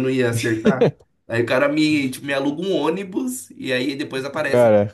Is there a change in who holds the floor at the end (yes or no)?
no